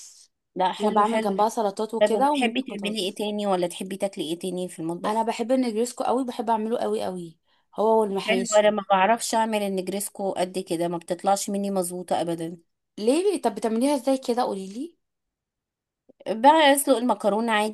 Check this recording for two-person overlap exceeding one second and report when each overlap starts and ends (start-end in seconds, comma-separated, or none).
2.0-3.2